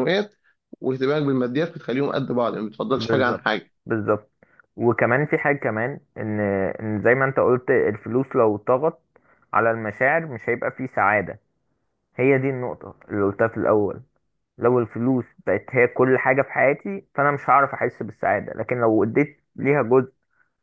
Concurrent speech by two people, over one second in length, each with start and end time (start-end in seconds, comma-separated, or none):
none